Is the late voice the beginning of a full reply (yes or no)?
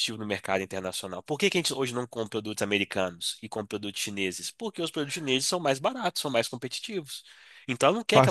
no